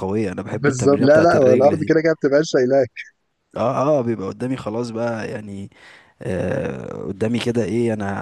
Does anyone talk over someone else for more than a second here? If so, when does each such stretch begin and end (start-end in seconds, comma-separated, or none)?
0.5-1.9